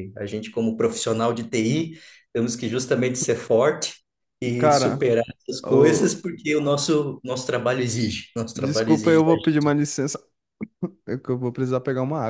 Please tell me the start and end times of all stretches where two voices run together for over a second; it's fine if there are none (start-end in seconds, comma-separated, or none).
8.5-9.7